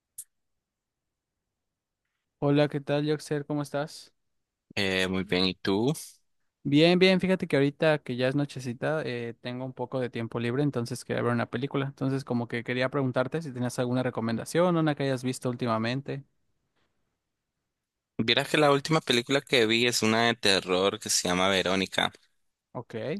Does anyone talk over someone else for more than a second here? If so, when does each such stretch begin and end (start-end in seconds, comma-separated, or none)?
none